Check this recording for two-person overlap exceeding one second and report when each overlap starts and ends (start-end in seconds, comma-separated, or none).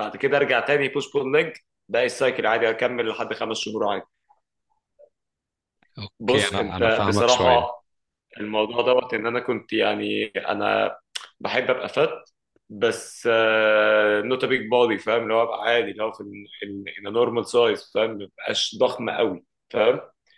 6.2-7.6